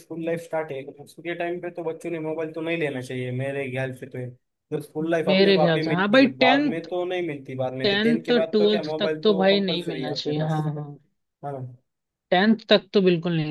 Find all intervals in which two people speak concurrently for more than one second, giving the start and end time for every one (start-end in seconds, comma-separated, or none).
5.3-6.9, 7.8-10.7